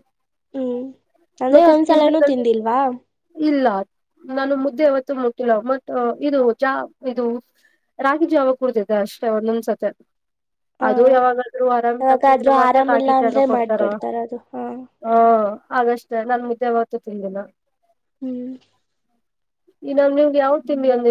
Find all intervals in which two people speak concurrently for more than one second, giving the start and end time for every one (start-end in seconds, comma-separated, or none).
12.0-13.8